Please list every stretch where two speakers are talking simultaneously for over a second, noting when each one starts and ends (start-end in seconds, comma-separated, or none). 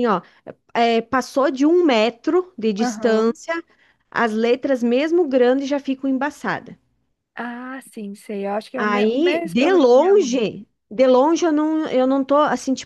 8.8-10.4